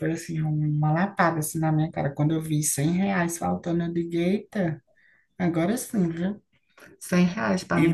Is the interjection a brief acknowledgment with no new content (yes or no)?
no